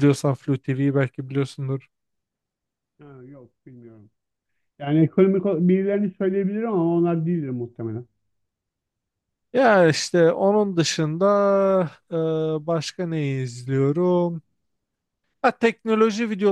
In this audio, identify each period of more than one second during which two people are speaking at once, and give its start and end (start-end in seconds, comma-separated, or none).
none